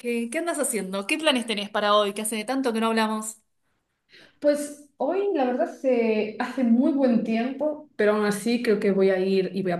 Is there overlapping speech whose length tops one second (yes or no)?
no